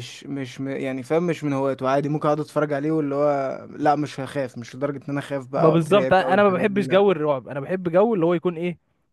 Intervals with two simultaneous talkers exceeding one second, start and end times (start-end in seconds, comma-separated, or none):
5.6-7.0